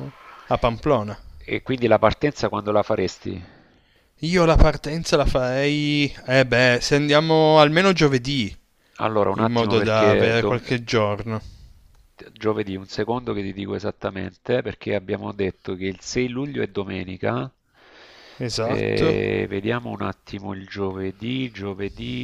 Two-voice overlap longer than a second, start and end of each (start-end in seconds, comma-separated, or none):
9.3-10.6